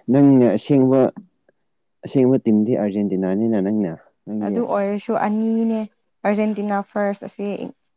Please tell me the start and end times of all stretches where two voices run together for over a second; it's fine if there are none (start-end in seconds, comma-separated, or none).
none